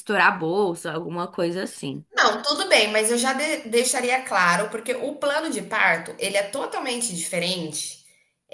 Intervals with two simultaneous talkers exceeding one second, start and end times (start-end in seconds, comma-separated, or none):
none